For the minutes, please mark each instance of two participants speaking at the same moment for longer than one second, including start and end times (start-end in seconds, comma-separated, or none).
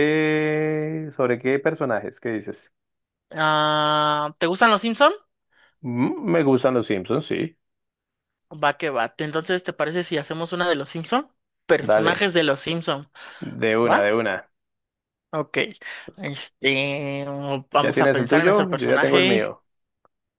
17.8-19.5